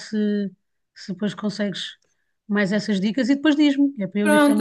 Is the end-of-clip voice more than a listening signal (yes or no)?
yes